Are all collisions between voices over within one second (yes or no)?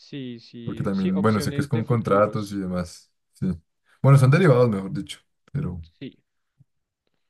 no